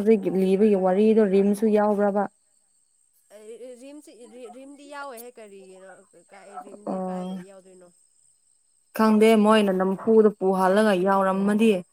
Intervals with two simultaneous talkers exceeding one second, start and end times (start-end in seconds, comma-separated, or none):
none